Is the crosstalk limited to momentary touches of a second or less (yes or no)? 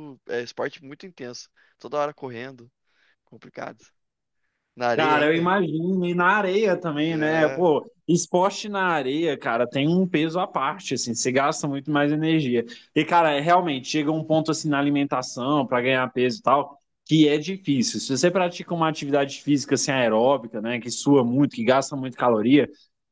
yes